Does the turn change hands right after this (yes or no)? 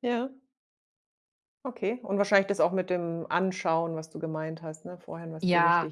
yes